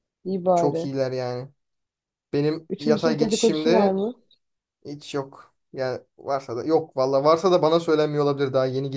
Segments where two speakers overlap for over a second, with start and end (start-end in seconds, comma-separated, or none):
2.7-4.0